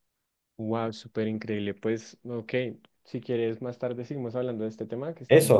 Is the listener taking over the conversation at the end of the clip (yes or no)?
yes